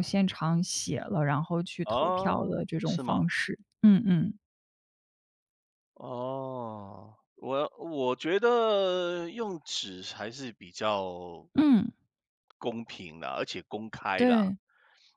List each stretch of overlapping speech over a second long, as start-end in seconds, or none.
1.8-3.2